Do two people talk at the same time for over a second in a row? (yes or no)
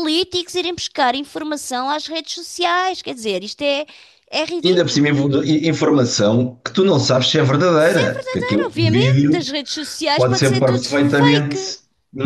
yes